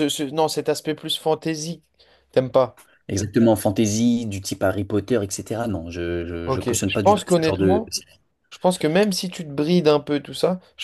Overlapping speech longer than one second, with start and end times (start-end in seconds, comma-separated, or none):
6.4-7.9